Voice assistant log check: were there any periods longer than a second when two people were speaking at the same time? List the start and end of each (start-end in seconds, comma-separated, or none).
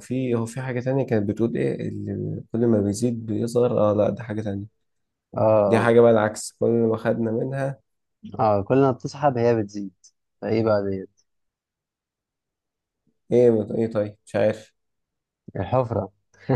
none